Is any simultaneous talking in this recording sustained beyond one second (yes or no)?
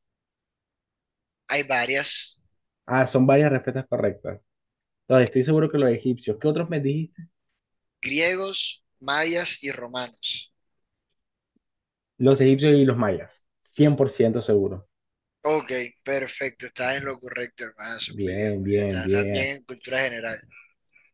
yes